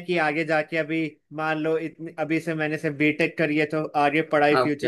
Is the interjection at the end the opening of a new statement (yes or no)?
no